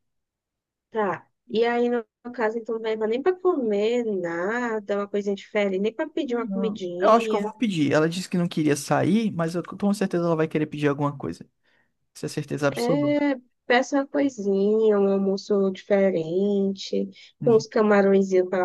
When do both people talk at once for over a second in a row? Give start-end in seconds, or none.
6.2-7.5